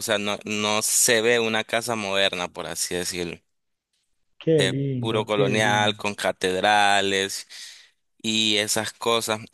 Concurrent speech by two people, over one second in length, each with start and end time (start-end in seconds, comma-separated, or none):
4.6-6.1